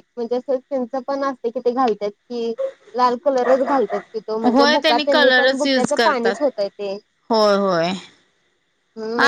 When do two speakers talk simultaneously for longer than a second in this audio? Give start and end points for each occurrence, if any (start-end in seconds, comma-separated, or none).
4.6-6.3